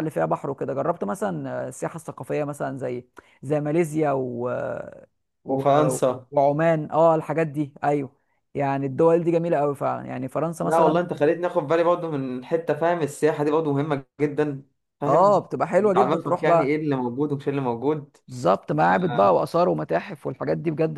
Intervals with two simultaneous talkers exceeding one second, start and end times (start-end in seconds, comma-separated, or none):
15.1-16.8